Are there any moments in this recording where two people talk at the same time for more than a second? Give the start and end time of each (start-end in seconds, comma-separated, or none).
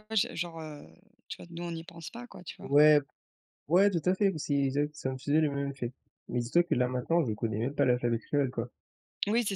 none